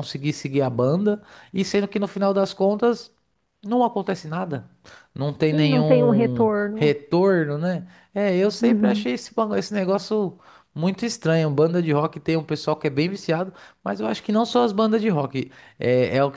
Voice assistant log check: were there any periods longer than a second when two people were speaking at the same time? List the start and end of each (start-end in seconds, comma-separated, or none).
5.5-6.9